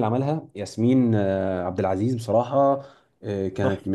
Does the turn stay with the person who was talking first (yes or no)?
yes